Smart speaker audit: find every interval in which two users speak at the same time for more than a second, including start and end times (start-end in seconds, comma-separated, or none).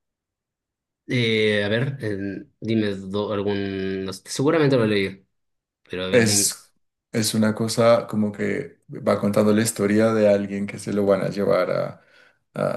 none